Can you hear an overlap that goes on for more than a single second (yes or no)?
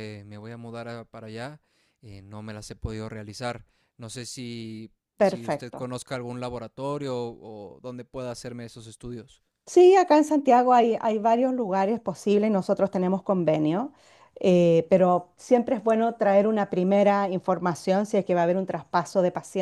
no